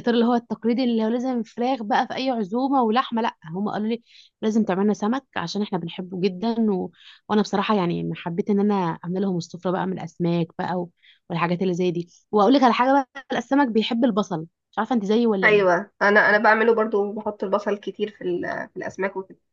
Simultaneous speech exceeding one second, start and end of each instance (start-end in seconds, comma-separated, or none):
none